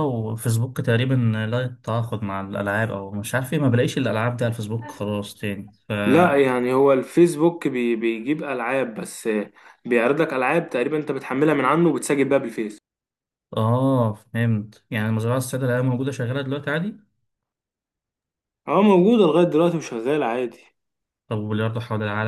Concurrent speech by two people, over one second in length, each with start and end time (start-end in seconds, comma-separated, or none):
none